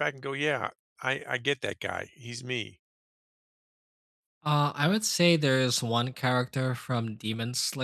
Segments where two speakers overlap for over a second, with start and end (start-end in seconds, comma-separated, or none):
none